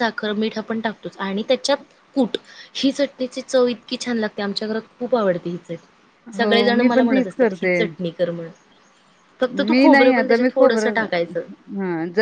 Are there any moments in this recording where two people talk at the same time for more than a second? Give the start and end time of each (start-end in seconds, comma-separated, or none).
9.7-11.4